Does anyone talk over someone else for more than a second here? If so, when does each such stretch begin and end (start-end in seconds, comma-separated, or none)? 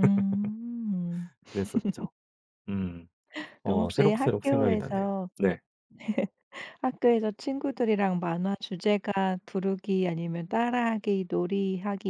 3.6-5.3